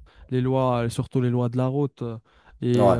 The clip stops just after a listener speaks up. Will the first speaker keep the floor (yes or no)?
yes